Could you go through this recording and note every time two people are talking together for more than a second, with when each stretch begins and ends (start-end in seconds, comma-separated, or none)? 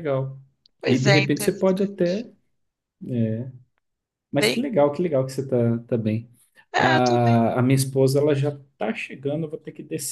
0.8-2.3